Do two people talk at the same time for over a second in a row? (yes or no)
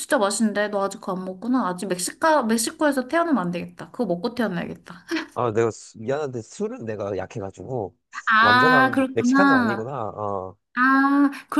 yes